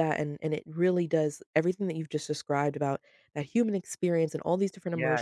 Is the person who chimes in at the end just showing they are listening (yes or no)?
yes